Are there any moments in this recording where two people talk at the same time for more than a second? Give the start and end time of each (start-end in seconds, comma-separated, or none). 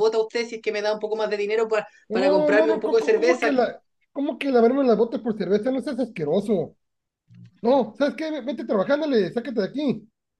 2.1-3.5